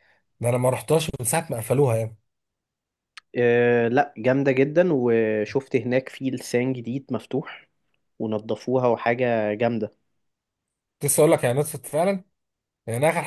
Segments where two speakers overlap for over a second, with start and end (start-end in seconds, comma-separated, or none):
none